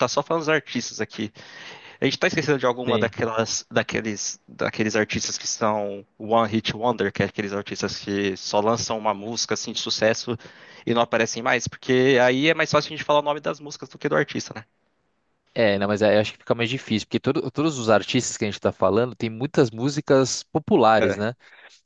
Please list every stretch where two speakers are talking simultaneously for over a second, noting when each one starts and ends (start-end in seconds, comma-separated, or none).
none